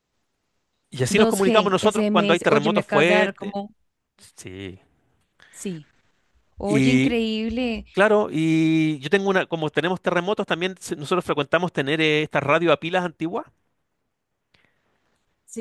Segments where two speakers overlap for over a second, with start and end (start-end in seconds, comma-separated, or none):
1.1-3.5